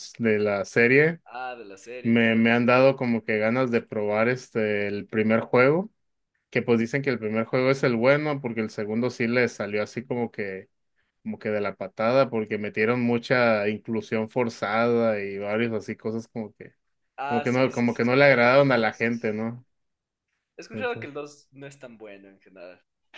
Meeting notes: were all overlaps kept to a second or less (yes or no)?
no